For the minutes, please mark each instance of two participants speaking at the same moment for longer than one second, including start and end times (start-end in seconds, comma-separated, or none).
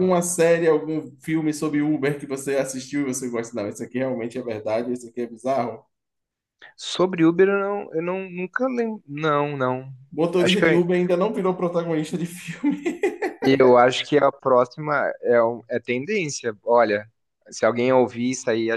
none